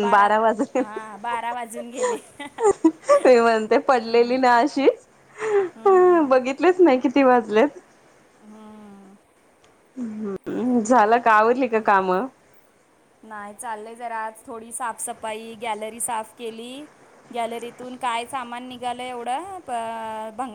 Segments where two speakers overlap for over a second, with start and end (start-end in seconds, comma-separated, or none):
none